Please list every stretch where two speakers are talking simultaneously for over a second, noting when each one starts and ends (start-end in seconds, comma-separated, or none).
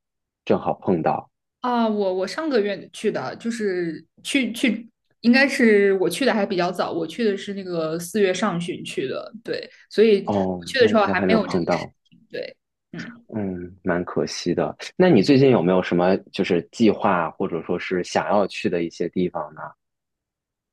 10.2-11.9